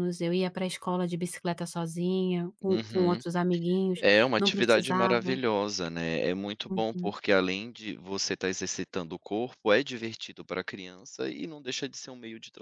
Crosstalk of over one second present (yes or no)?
yes